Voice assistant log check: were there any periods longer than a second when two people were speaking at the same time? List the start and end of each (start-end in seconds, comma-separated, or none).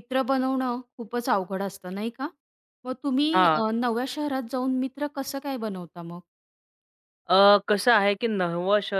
none